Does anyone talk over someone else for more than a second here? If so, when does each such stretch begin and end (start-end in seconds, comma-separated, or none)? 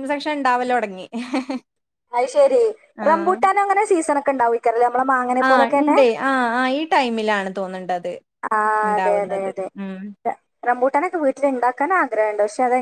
none